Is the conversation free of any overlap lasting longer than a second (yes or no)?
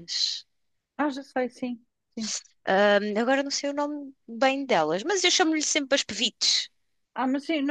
yes